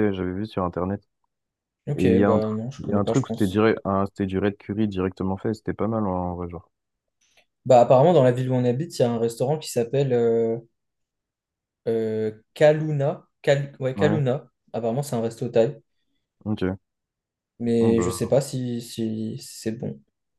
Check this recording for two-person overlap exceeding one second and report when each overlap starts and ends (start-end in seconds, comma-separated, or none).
1.9-3.6